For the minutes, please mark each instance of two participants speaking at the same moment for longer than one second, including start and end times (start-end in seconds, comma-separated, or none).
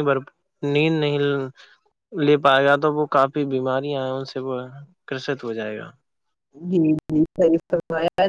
none